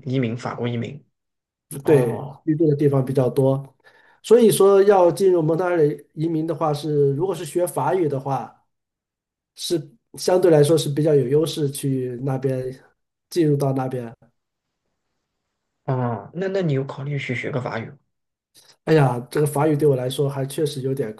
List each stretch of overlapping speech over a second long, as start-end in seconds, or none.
none